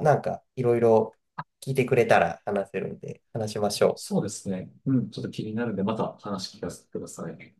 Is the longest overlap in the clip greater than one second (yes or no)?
no